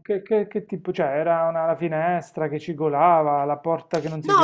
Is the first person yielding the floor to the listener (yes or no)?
yes